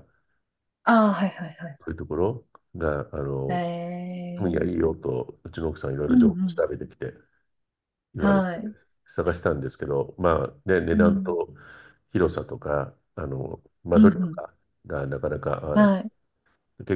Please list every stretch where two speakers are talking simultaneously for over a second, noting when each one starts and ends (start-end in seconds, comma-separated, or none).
none